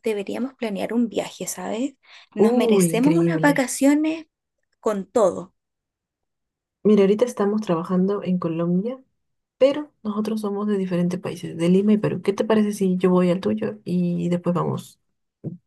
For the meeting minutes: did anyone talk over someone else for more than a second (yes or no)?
yes